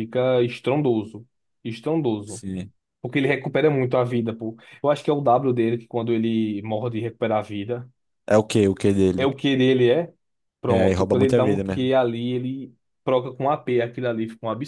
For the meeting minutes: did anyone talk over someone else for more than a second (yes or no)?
yes